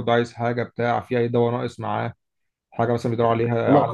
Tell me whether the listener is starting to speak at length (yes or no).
no